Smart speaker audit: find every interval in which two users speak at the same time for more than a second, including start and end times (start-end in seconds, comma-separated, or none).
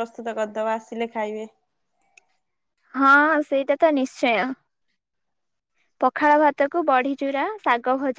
none